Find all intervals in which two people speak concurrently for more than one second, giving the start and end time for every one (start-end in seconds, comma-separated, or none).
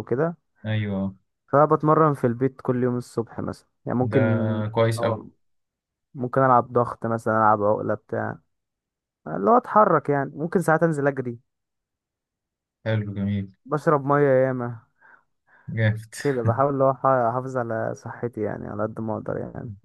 none